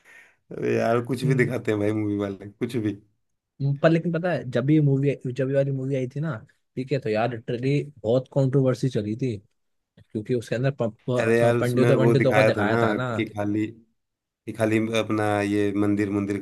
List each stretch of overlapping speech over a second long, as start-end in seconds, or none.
11.2-12.8